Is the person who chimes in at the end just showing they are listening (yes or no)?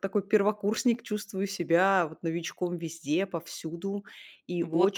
no